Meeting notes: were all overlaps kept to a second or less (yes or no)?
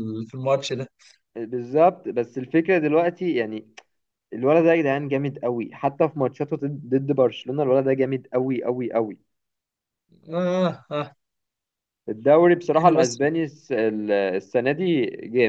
yes